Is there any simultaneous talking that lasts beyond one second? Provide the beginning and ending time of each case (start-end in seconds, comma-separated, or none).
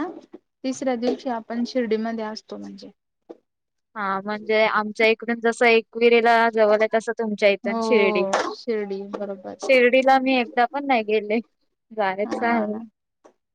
none